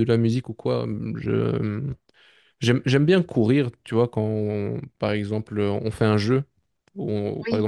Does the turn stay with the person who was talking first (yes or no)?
yes